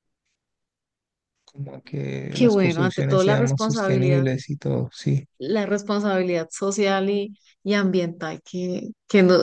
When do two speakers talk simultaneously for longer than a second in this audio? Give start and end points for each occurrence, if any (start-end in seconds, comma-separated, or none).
2.3-4.3